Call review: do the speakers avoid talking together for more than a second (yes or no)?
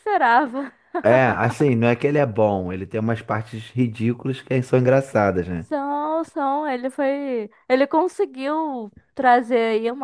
yes